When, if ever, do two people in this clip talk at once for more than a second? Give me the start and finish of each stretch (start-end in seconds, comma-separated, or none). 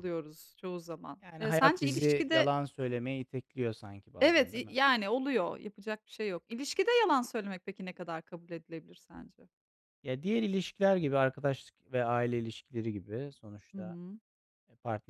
1.2-2.5